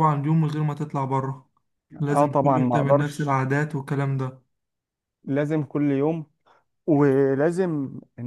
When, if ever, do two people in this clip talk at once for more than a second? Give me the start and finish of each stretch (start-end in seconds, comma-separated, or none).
2.1-3.4